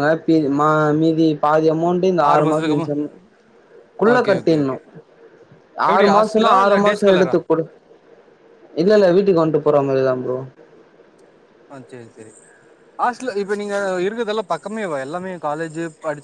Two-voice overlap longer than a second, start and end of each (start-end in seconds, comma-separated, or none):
5.9-7.3